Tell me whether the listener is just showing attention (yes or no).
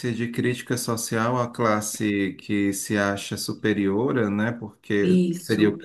yes